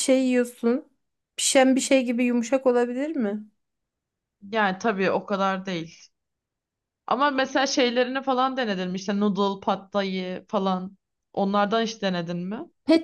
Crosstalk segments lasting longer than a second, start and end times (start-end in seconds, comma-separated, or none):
none